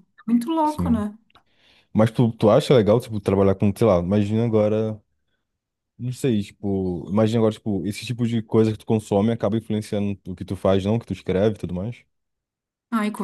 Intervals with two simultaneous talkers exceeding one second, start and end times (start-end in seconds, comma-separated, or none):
none